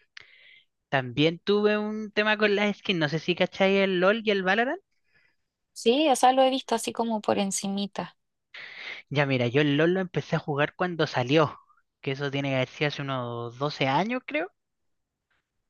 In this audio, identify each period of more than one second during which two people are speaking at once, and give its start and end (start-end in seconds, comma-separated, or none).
none